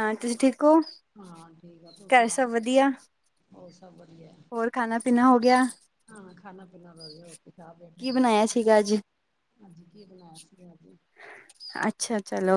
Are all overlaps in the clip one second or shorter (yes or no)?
yes